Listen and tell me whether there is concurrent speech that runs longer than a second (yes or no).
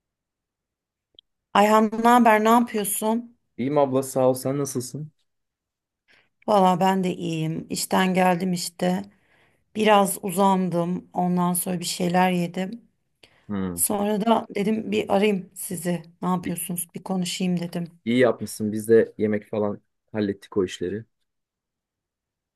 no